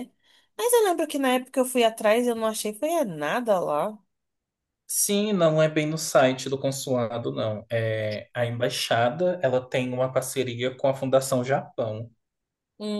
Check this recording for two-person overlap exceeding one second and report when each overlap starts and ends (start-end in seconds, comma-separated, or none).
none